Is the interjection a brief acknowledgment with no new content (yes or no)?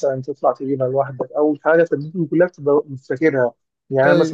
yes